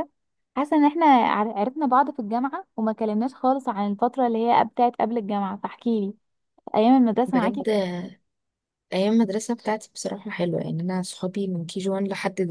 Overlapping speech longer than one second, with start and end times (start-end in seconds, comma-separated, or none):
none